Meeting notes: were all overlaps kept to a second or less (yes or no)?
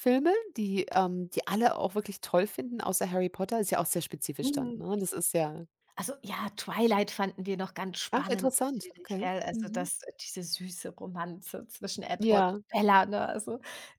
no